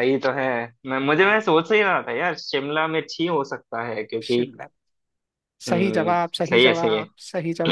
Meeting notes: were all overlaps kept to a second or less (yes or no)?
no